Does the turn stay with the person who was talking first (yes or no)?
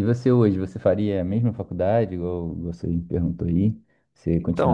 no